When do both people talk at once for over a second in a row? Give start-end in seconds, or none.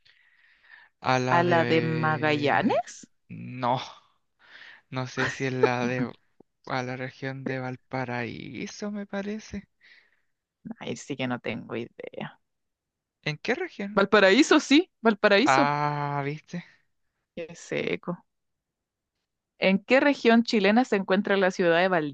1.3-2.8